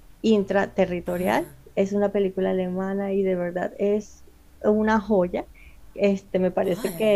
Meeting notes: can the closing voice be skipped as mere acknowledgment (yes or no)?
yes